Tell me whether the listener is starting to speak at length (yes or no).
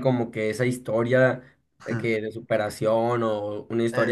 no